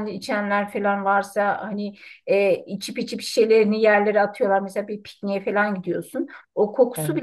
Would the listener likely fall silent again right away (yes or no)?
yes